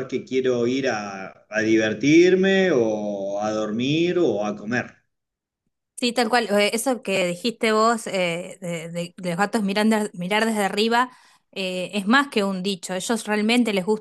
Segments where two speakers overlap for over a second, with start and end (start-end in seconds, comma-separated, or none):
none